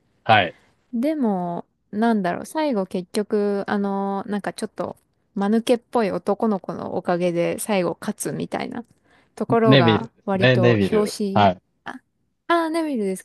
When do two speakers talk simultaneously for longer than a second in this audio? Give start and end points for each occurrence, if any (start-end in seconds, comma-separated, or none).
9.6-11.5